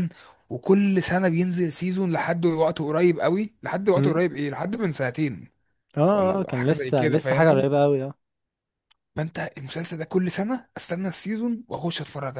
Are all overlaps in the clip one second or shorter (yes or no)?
no